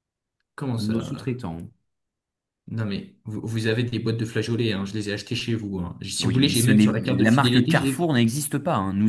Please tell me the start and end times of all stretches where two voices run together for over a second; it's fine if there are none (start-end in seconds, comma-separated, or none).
6.2-8.1